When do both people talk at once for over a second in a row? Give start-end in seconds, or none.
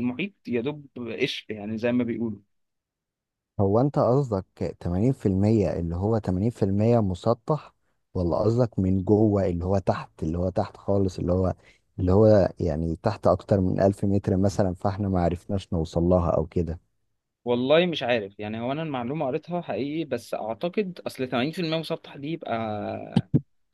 none